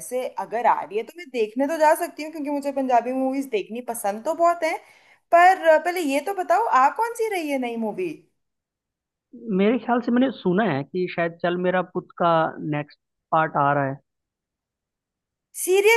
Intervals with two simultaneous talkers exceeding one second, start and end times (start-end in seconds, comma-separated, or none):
none